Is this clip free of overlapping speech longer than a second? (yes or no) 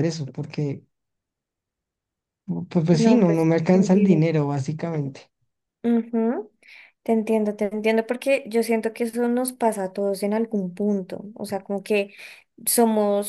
no